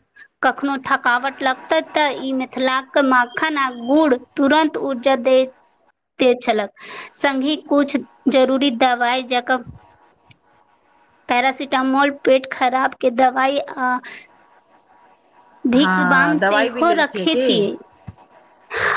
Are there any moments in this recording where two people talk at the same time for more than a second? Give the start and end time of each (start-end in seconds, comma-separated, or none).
15.8-17.6